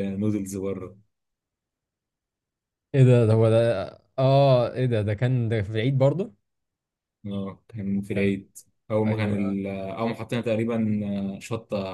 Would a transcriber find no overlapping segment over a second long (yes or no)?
yes